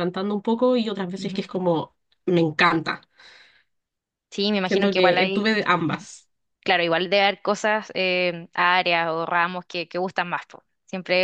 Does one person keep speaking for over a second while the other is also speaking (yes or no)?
yes